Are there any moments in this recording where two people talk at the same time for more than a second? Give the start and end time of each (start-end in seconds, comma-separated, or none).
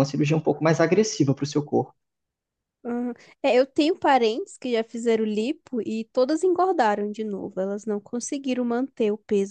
none